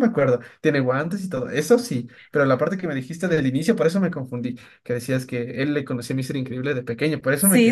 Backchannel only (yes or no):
no